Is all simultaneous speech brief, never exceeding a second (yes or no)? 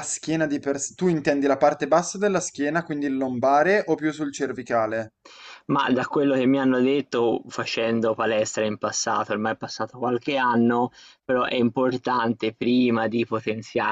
yes